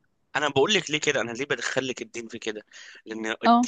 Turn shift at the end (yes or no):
no